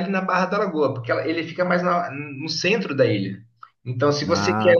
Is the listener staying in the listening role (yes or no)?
yes